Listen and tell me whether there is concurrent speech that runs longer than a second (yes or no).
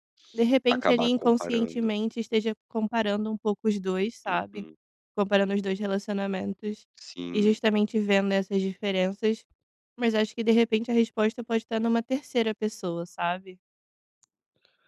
yes